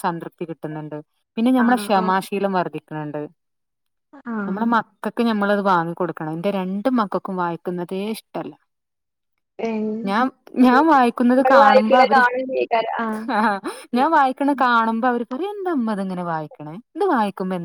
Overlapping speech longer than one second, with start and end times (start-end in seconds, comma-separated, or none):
10.6-12.2